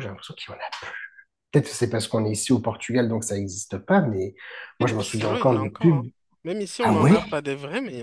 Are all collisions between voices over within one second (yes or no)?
no